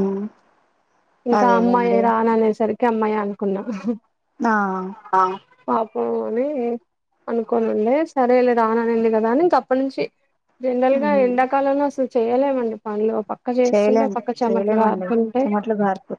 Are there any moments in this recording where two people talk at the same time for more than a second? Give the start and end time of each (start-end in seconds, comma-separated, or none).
13.7-15.4